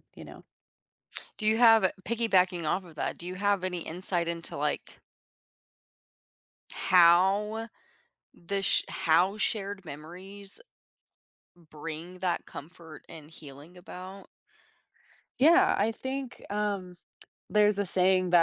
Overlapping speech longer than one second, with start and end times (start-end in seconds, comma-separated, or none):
none